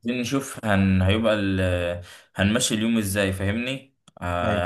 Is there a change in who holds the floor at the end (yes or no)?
no